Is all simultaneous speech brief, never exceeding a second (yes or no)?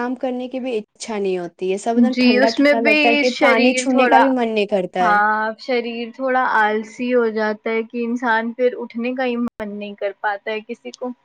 no